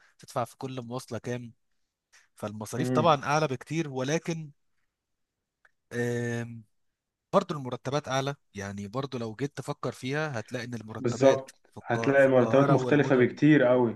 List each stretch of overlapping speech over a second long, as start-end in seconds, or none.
11.0-13.4